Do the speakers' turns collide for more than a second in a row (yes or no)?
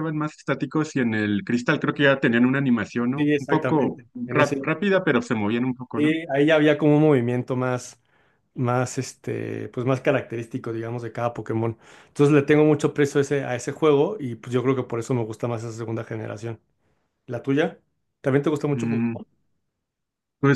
yes